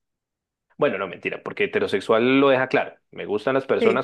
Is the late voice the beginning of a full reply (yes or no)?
no